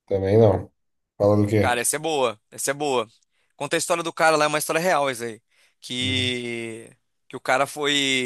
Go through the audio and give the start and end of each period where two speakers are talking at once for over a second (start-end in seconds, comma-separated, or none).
none